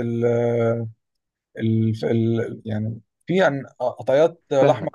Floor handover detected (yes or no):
yes